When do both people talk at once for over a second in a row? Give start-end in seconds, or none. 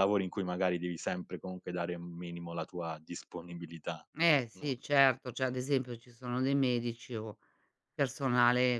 none